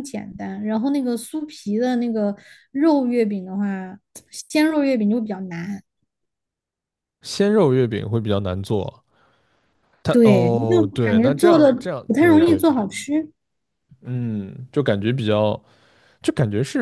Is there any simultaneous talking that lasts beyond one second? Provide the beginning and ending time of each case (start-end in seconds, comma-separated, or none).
10.1-12.8